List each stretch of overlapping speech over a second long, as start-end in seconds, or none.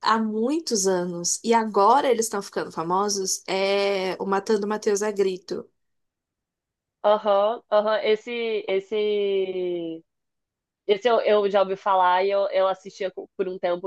none